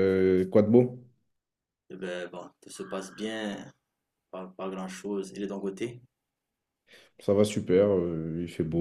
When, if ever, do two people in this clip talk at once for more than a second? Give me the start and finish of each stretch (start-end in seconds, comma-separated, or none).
none